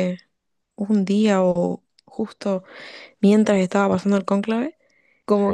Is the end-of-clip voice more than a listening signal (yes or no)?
no